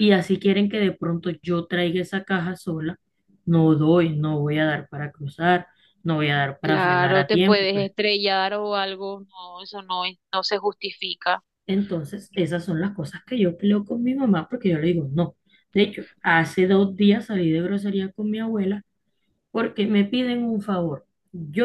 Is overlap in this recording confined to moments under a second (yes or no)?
no